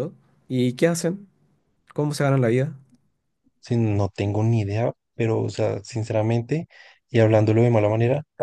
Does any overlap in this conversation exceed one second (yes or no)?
no